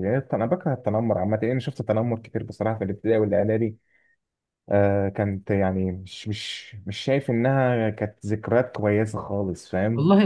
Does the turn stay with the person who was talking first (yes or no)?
no